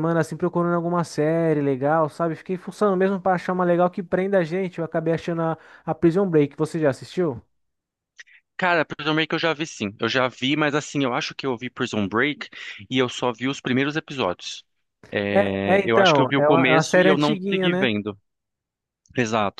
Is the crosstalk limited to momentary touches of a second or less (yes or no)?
no